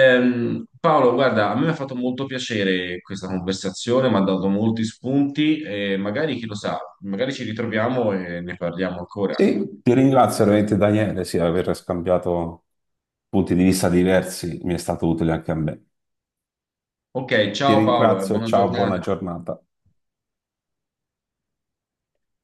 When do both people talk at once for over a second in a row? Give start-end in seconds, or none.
17.6-19.0